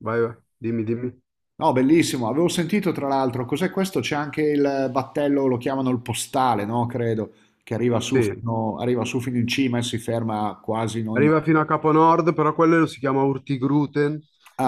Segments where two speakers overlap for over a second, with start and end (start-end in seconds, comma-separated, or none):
none